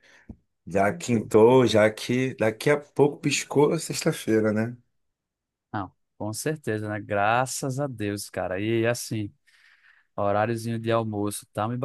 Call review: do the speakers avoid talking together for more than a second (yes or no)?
yes